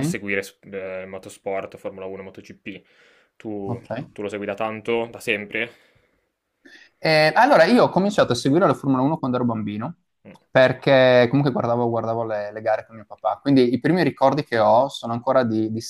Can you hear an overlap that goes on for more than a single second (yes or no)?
no